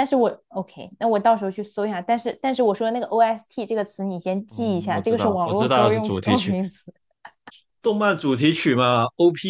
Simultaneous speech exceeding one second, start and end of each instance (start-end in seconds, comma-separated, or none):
4.5-6.5